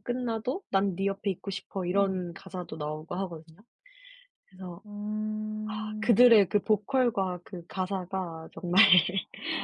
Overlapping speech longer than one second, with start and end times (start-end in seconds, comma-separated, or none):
none